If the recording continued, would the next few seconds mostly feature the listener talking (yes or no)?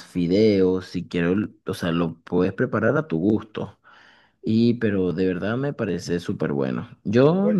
no